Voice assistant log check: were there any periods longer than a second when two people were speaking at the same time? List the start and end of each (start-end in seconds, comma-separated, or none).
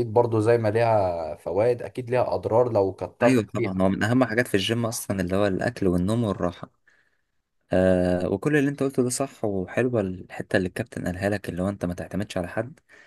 none